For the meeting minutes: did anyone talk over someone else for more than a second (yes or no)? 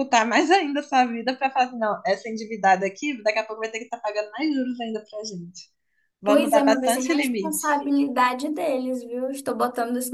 yes